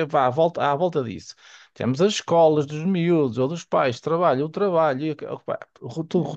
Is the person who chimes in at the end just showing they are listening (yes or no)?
yes